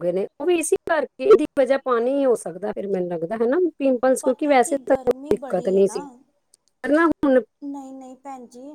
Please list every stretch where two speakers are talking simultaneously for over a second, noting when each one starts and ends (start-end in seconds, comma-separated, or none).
4.2-6.0